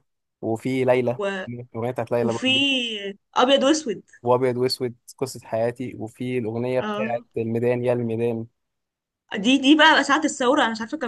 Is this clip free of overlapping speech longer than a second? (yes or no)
yes